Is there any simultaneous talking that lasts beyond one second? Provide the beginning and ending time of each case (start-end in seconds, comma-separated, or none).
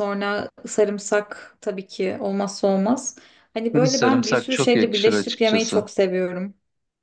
3.7-5.8